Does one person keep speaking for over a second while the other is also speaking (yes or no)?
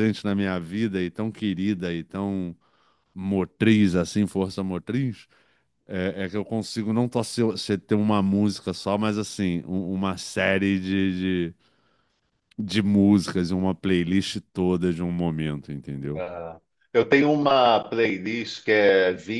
no